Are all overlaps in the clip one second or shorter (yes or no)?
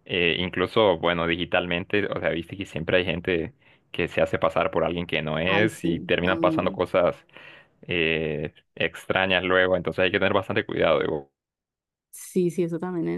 no